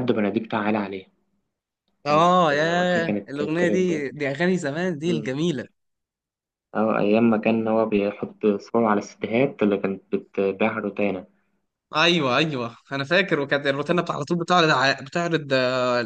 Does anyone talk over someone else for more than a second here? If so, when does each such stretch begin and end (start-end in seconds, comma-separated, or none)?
2.0-4.0